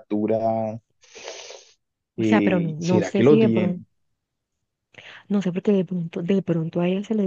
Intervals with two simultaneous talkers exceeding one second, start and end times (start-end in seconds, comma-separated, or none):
2.2-3.8